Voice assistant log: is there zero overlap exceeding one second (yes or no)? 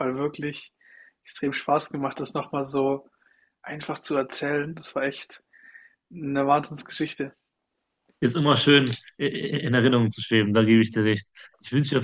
yes